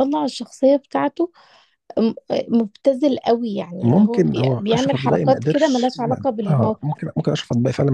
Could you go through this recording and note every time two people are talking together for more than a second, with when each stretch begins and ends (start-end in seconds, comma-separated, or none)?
3.8-6.9